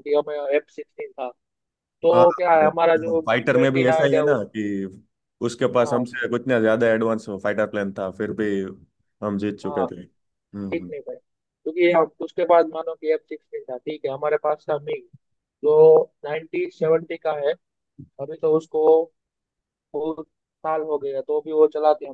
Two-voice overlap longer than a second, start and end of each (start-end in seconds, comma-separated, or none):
2.1-4.4